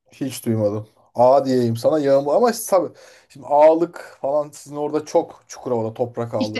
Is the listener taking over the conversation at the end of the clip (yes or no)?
yes